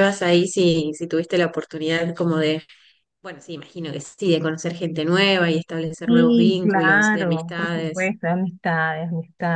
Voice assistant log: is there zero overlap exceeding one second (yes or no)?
no